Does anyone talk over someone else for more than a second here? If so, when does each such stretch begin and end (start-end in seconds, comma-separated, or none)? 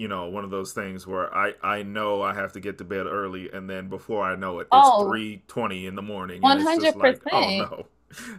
6.4-7.7